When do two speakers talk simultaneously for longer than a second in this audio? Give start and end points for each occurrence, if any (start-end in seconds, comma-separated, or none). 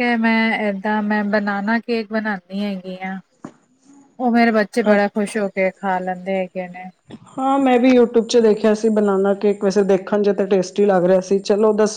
none